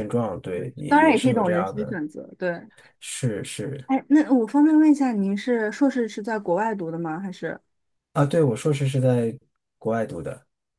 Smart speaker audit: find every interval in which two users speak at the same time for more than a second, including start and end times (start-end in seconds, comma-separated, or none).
0.6-2.0